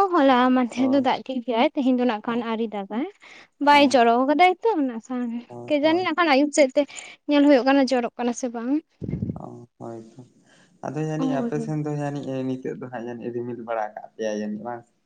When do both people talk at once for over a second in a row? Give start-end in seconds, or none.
none